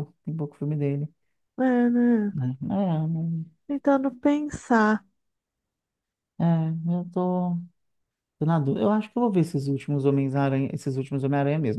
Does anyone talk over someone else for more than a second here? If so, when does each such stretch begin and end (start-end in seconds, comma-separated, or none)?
none